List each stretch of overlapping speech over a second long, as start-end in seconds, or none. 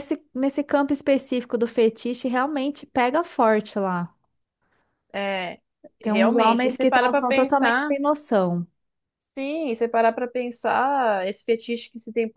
6.0-7.9